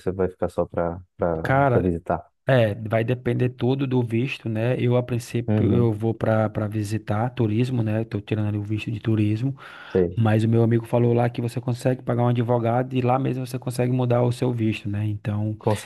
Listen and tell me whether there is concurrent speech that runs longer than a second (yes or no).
no